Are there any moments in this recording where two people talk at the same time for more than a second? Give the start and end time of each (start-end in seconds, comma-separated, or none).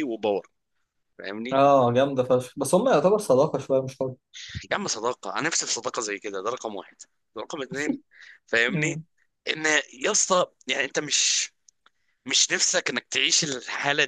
none